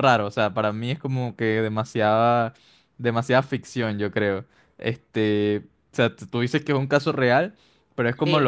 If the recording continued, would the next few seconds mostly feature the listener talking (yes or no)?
no